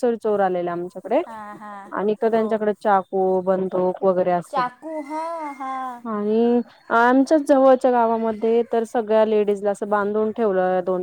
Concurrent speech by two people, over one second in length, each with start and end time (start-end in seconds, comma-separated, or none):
none